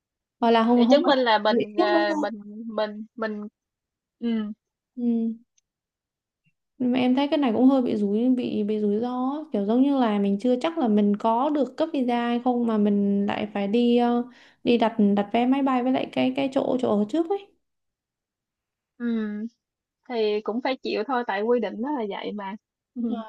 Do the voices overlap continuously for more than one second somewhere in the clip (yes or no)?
yes